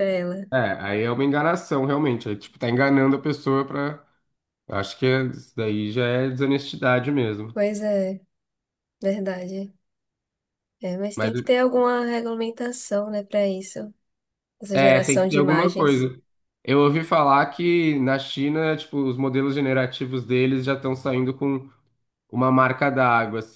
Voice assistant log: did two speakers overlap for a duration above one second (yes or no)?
yes